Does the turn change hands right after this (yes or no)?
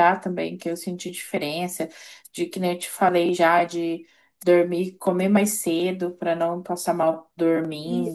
yes